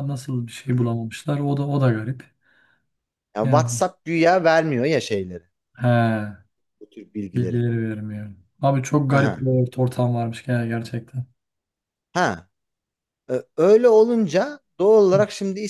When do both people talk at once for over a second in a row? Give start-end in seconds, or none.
none